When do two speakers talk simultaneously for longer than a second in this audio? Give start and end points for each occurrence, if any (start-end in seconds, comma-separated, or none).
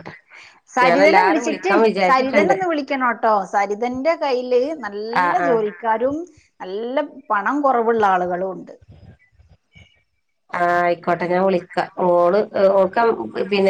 0.8-2.5